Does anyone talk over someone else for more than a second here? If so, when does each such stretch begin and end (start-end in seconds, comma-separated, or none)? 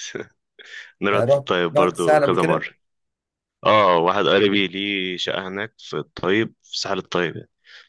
1.1-2.7